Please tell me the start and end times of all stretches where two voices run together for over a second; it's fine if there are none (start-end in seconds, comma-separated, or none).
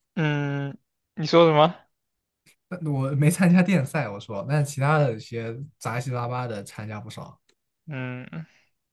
none